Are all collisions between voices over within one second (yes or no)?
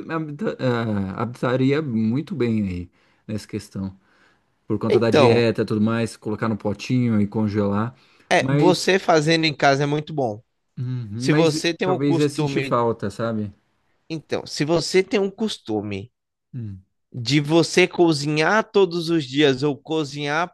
no